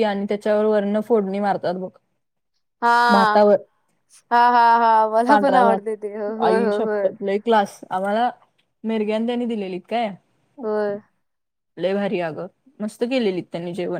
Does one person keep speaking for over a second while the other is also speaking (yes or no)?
yes